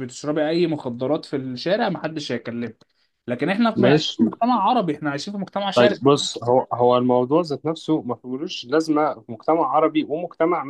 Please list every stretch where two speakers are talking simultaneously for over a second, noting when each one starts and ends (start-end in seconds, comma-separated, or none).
none